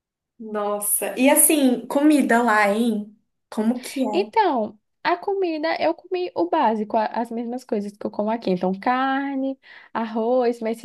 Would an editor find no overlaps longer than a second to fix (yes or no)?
yes